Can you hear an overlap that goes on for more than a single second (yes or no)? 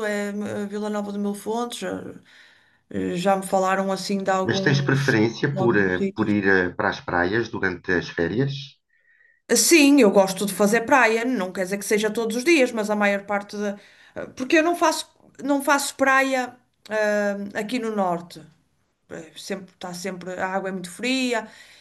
yes